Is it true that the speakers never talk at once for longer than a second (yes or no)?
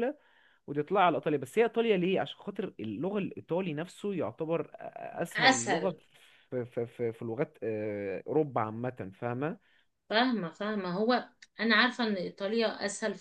yes